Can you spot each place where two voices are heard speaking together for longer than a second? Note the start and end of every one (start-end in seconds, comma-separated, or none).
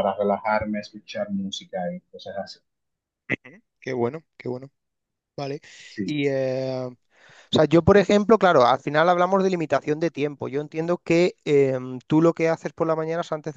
none